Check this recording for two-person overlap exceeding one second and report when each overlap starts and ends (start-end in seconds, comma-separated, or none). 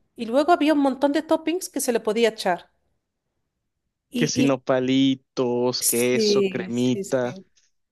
5.8-7.3